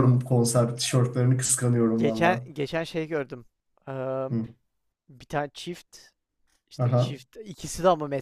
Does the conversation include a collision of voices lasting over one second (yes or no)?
no